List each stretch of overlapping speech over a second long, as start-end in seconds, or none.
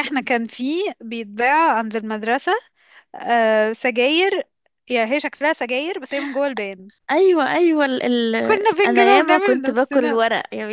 8.8-10.2